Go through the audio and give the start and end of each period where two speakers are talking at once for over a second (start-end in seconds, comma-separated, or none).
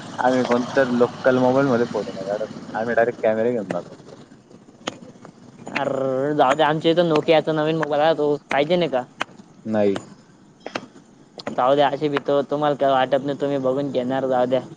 none